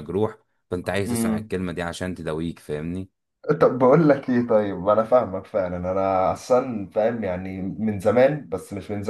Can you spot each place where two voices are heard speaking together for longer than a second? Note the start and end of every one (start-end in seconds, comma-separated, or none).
none